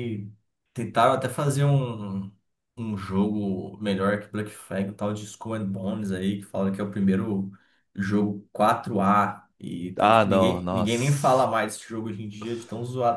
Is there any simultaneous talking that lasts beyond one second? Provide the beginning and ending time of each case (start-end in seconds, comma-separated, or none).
9.9-11.5